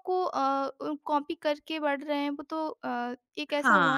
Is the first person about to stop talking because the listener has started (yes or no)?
yes